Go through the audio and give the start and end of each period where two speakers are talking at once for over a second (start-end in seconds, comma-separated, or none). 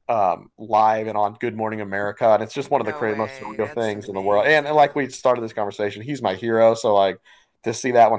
2.8-5.2